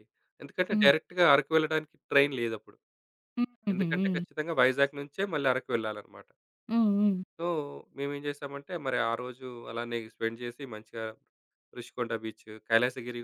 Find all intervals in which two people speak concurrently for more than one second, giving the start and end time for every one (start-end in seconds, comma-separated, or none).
none